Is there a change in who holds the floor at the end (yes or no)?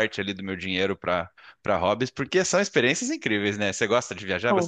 yes